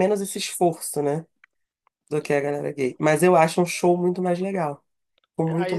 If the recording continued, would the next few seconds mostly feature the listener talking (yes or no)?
yes